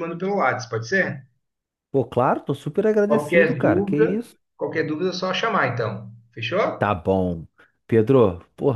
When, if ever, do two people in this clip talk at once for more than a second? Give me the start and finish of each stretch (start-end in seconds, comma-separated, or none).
3.1-4.3